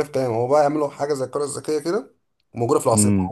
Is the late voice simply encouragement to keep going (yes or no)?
yes